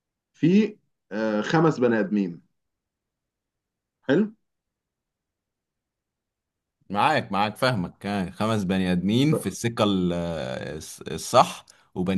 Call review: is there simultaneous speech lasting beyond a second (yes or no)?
no